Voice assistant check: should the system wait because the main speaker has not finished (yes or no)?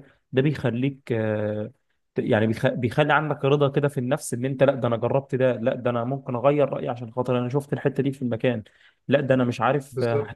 yes